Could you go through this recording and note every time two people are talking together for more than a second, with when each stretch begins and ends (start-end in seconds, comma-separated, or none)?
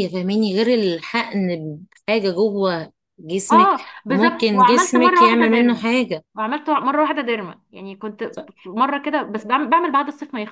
3.5-5.8